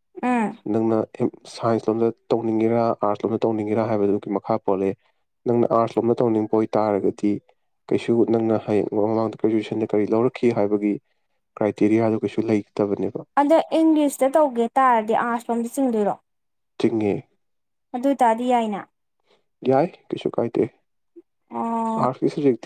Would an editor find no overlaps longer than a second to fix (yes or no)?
yes